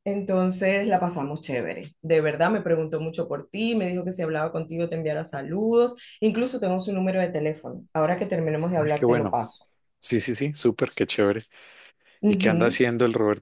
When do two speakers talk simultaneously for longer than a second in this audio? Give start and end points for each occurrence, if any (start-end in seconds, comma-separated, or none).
none